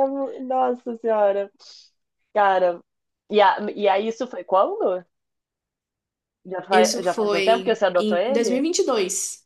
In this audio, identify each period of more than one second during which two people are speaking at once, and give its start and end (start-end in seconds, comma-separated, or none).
6.7-8.6